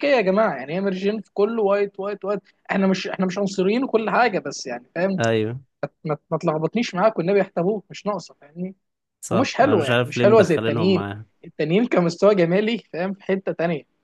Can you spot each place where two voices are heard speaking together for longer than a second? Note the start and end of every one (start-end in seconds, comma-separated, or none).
9.3-11.0